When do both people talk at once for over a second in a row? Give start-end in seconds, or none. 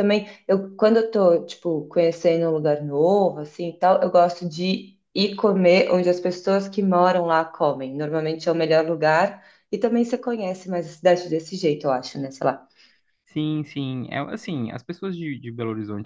none